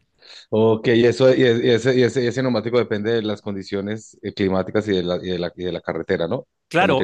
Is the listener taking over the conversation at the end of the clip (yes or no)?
yes